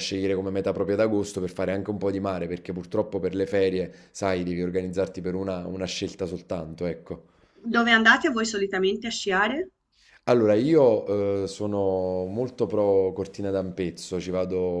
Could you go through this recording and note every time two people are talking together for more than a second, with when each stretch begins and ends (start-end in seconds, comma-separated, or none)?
none